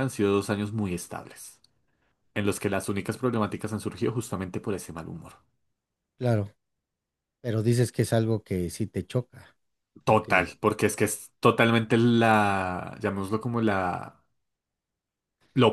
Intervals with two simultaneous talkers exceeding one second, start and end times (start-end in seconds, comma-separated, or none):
none